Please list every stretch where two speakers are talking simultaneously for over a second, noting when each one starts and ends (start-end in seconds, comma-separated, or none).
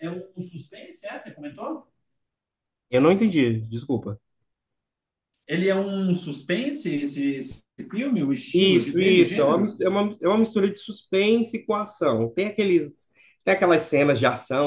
8.5-9.8